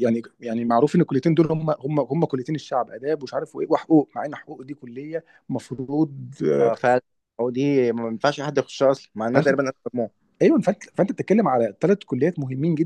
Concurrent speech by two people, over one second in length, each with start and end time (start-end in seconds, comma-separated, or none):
none